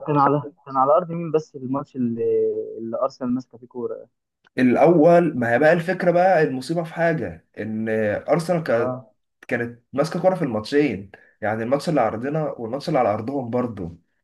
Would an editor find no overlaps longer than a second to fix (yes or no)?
yes